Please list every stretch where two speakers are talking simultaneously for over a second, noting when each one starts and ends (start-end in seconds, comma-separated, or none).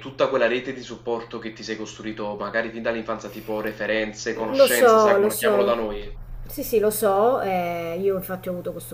4.5-5.8